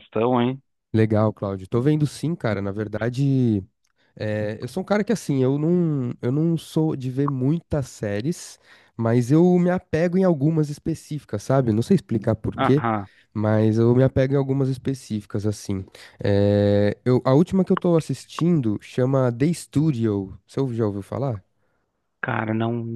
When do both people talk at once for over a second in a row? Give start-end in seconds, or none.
none